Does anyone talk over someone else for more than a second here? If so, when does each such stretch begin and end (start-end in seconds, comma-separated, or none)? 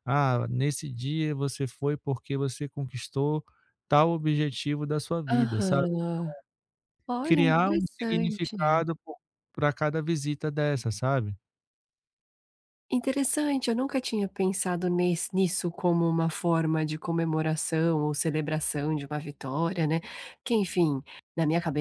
7.2-8.8